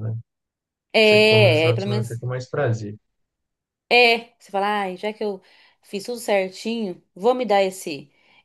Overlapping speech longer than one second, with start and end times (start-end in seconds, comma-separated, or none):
1.0-2.2